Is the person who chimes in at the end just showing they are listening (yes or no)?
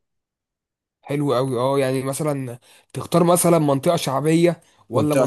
no